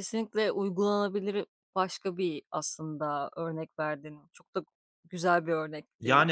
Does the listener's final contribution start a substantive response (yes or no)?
yes